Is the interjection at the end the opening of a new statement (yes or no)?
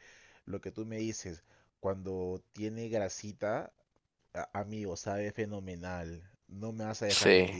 no